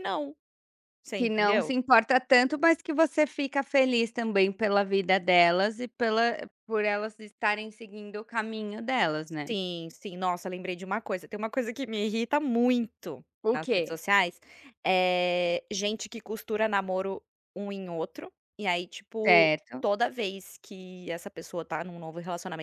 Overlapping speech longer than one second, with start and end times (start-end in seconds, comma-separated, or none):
none